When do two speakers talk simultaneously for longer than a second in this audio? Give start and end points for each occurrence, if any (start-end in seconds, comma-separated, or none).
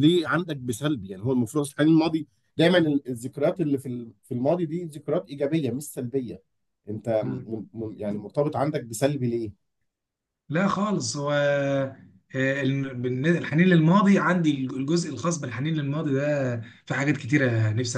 none